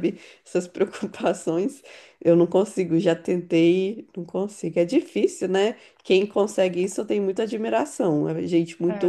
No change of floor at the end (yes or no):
no